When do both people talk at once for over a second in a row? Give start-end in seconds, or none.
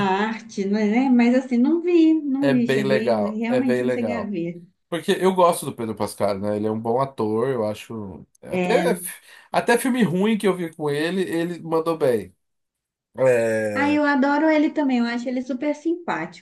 2.4-4.3